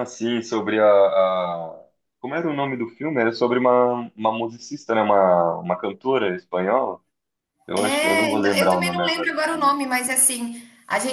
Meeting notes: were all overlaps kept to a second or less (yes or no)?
no